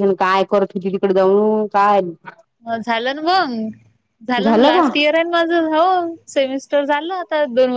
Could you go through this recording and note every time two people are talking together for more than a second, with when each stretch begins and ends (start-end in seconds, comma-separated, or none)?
none